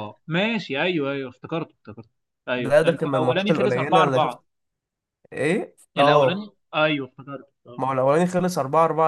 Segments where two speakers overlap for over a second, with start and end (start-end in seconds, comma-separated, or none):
2.5-4.4